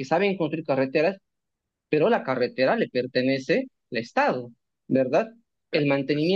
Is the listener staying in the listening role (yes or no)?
yes